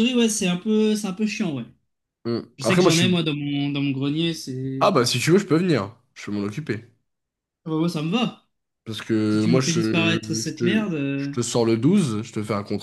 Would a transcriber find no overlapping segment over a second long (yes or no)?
no